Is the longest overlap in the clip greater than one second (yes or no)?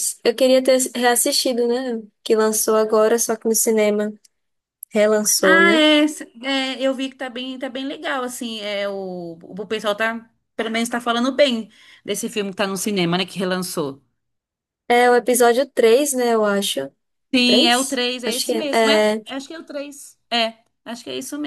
yes